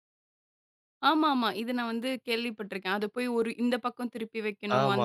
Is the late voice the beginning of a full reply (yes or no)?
yes